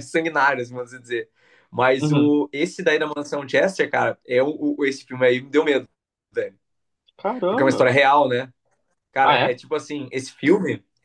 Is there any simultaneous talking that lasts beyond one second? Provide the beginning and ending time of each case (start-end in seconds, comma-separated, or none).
none